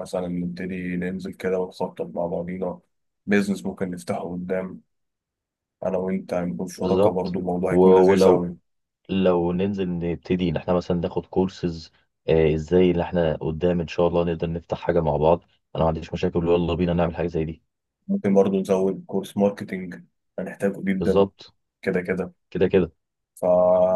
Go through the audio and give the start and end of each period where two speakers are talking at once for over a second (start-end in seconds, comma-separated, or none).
6.8-8.6